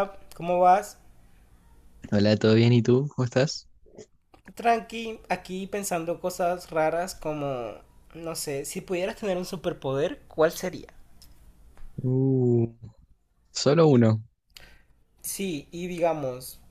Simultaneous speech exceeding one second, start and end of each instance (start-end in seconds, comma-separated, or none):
none